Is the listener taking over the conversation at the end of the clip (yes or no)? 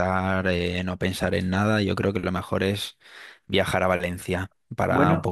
no